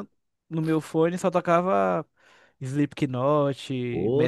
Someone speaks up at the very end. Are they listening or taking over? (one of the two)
taking over